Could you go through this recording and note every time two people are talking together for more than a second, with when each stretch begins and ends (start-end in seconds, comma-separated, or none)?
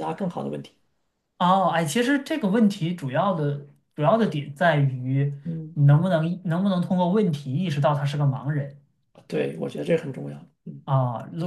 none